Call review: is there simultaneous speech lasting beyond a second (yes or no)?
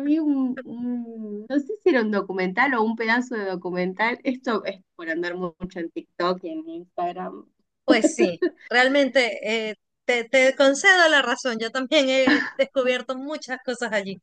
no